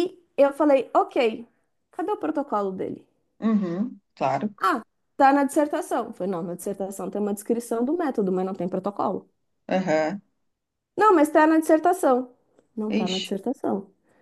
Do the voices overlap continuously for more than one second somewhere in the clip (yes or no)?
no